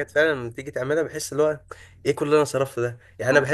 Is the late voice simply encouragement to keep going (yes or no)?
yes